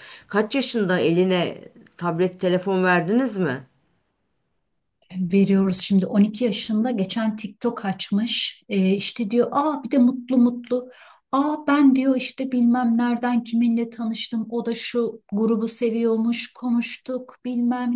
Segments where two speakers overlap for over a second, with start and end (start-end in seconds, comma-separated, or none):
none